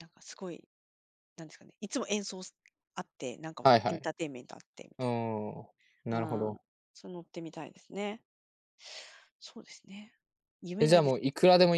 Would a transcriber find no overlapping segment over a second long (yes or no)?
yes